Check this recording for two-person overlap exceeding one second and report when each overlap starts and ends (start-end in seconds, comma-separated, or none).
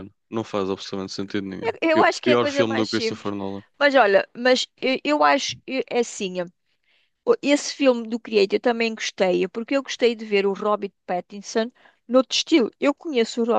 1.8-3.3